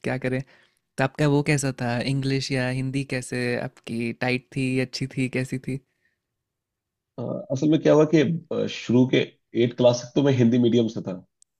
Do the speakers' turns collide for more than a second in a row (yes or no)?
no